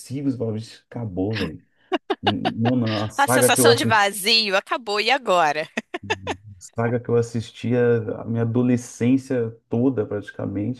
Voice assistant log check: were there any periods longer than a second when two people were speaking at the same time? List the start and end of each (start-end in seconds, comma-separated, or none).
none